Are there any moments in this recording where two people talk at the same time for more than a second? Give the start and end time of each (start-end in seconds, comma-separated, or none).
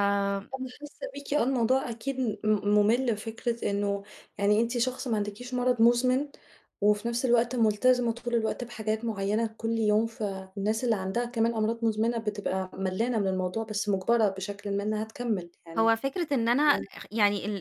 none